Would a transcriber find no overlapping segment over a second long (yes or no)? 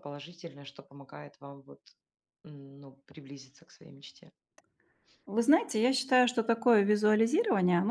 yes